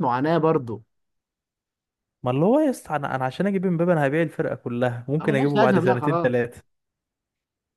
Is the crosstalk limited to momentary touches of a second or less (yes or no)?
no